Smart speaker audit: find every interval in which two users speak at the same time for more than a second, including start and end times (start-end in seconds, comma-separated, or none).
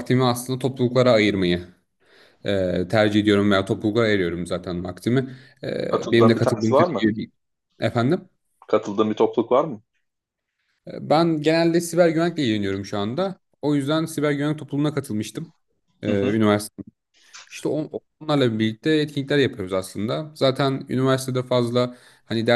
5.9-7.1